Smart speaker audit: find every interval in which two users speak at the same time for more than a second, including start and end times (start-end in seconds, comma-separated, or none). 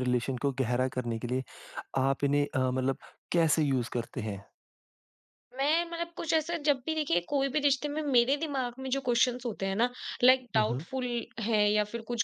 none